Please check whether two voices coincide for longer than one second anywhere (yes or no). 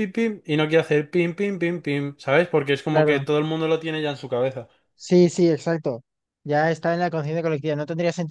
no